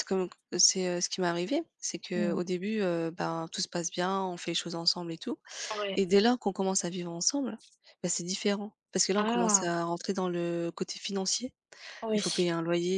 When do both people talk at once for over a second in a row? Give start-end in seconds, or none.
none